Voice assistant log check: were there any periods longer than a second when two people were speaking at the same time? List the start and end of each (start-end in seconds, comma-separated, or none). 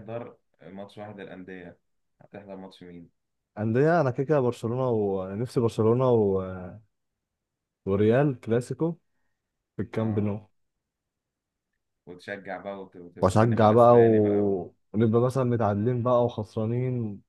13.2-14.6